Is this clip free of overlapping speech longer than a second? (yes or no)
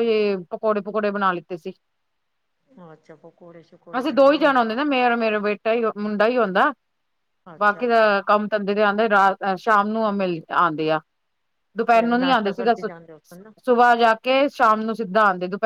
no